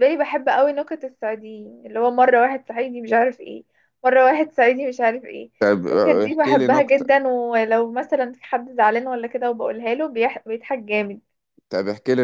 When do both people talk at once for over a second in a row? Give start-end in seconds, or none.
5.6-7.1